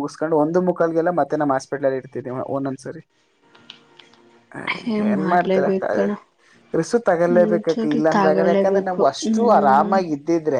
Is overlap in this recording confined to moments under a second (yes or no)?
no